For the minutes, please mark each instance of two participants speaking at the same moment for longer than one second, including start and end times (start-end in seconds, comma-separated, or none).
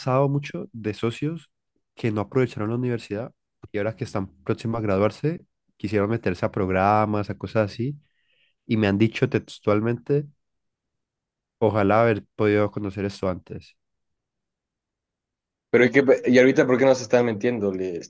none